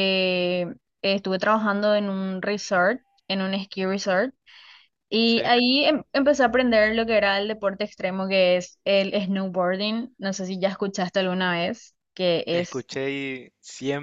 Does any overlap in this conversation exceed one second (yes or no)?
no